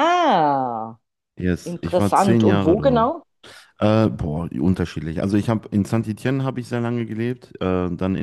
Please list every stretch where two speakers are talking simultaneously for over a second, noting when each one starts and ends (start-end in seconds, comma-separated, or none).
1.7-3.1